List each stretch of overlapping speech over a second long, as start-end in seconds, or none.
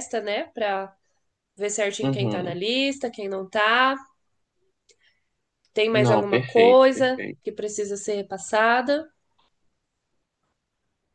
5.9-7.4